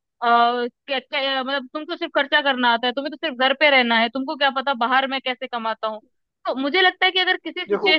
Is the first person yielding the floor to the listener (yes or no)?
no